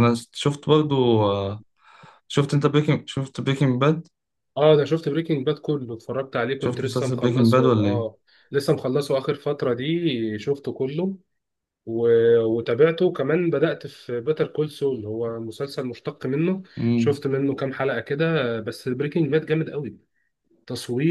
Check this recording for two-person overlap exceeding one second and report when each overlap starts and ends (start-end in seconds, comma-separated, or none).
6.6-8.1